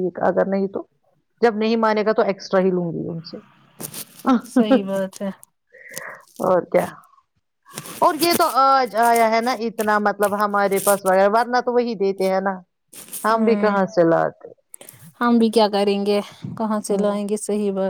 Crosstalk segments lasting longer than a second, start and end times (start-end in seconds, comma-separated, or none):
none